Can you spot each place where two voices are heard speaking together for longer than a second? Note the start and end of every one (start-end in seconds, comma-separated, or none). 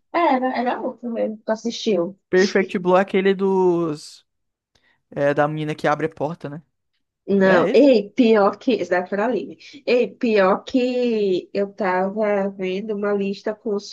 none